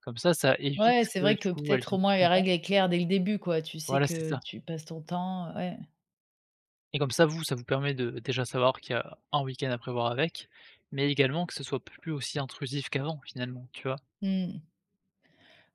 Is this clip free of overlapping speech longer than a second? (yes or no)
no